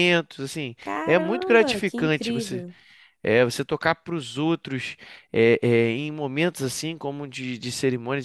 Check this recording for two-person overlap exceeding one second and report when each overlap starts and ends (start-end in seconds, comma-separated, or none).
0.8-2.6